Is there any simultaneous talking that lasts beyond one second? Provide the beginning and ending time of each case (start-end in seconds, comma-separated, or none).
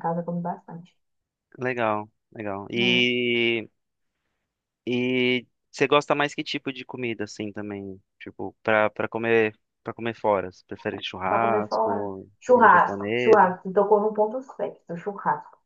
11.3-13.5